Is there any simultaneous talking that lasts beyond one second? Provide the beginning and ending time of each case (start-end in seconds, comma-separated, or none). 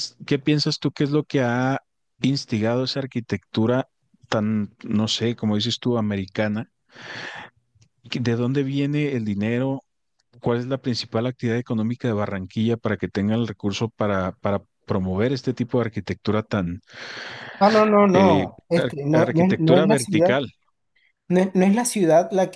18.1-20.4